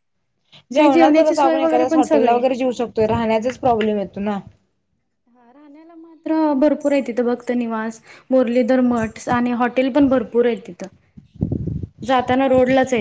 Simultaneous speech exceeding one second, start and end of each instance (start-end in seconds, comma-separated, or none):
0.8-2.4